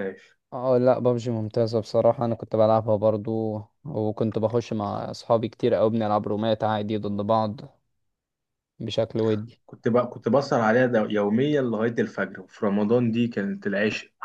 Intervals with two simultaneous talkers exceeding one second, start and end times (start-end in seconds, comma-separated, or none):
none